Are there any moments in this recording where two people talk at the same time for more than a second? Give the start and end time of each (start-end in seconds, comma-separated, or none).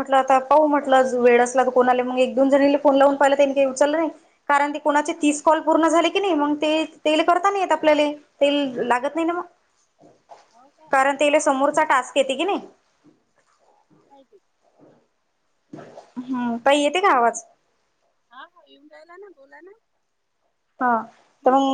none